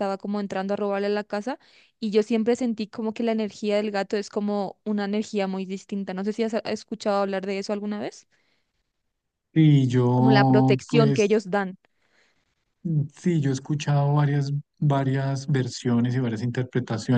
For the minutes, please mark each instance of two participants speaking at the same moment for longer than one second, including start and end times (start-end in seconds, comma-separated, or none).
10.2-11.3